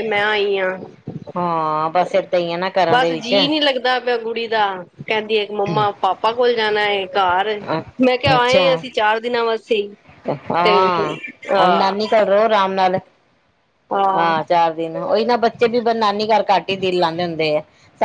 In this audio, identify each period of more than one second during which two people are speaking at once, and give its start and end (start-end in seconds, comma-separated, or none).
none